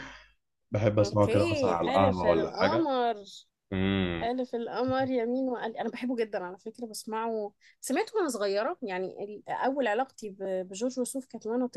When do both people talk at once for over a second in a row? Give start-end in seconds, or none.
1.0-2.9